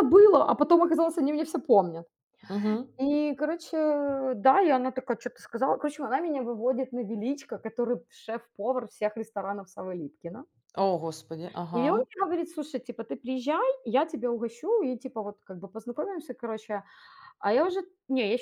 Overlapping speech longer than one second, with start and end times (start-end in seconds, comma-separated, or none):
none